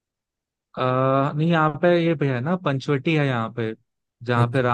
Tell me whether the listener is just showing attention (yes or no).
yes